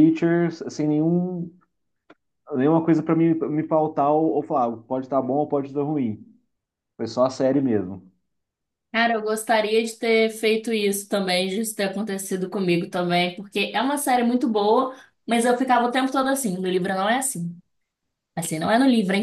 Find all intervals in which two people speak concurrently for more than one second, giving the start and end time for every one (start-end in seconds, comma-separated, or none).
none